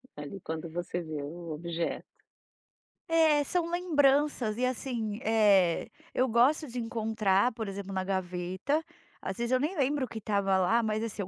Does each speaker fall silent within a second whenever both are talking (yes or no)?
yes